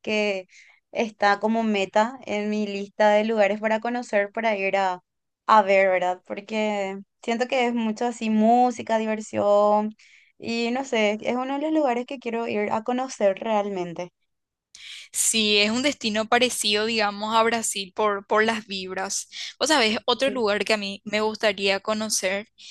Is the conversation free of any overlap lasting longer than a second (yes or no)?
yes